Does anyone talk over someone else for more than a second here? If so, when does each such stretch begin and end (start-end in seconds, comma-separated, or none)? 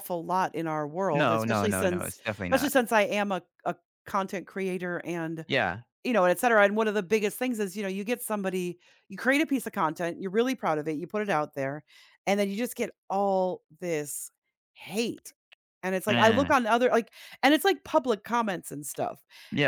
1.1-2.7